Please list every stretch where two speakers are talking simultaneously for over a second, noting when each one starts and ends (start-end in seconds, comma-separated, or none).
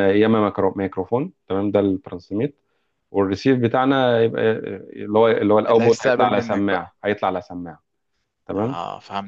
5.7-7.0